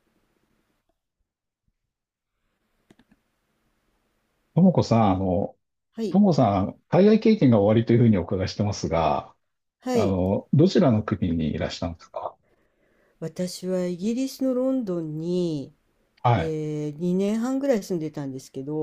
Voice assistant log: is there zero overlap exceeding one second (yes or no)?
yes